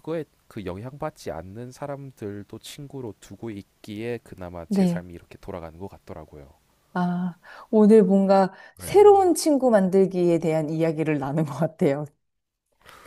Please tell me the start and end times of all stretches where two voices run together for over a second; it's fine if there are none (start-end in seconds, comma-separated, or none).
none